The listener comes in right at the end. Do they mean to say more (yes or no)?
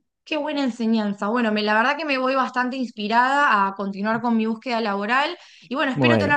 no